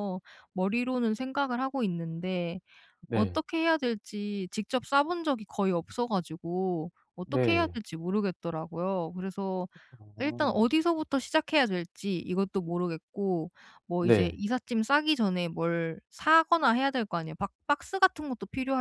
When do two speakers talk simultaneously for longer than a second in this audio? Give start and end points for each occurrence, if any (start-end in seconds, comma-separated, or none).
none